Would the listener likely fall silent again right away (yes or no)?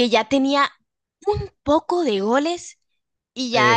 yes